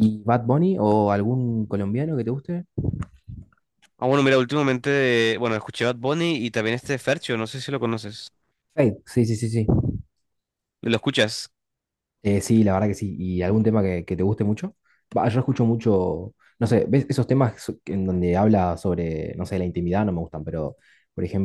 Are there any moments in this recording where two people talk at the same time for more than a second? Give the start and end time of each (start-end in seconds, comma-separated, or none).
none